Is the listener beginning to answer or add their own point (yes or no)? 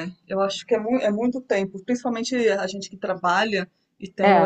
no